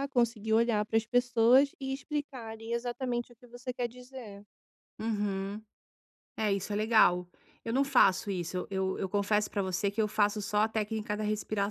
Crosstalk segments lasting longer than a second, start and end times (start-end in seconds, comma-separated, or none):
none